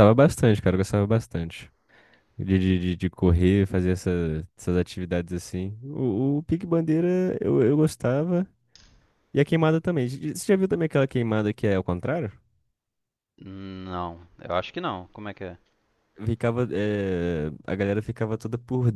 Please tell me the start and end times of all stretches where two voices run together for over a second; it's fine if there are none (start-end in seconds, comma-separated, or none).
none